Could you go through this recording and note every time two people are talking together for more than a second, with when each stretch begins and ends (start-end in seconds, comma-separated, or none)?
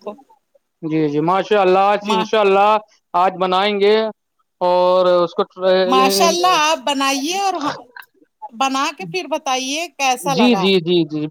none